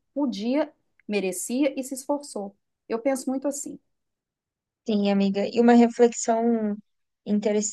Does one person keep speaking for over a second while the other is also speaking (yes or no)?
no